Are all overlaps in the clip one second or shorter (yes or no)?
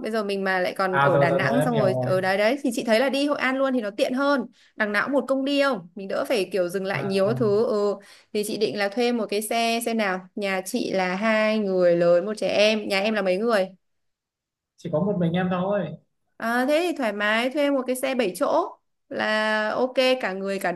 no